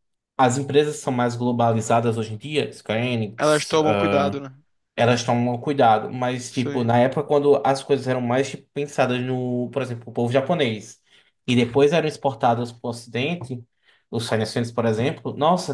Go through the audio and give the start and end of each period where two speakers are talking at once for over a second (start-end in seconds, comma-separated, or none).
none